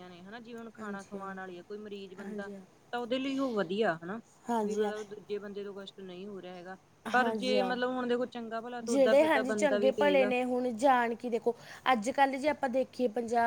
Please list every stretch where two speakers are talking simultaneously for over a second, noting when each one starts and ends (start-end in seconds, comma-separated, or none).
8.9-10.3